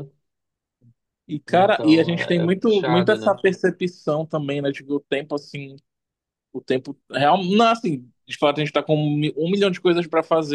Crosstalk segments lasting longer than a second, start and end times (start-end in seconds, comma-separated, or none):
1.5-3.4